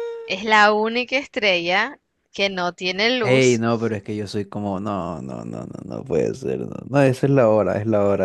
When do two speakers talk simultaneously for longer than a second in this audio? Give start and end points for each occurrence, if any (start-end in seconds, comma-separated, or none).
none